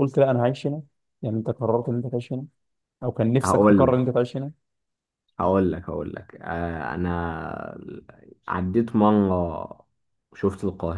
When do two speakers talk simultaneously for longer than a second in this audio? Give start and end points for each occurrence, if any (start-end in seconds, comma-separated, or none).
none